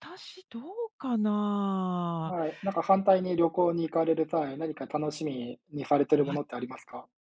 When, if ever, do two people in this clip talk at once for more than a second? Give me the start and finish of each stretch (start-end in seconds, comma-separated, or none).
none